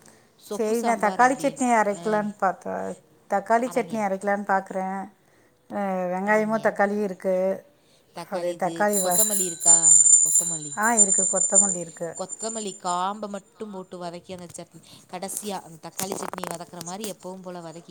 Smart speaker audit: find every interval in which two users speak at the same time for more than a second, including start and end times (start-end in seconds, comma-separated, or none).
0.6-2.1